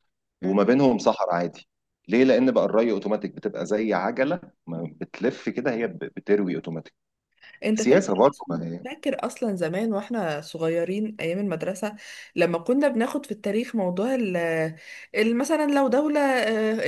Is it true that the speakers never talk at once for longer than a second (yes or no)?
yes